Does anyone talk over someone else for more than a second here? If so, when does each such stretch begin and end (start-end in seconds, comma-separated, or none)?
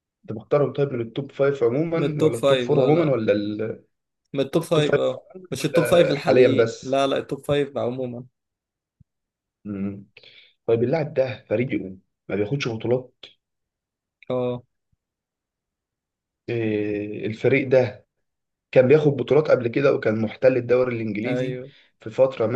1.9-3.2, 4.6-7.0